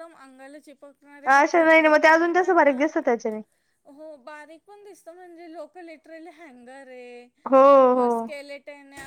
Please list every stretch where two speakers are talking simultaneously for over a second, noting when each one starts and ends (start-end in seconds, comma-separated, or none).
1.3-2.8